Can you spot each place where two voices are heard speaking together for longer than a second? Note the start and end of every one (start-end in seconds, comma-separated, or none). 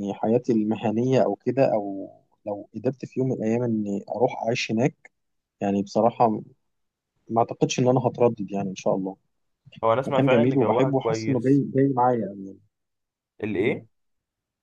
10.1-11.6